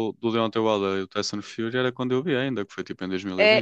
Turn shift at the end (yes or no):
yes